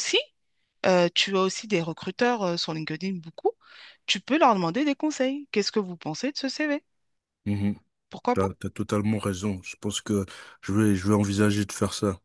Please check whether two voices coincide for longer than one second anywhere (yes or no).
no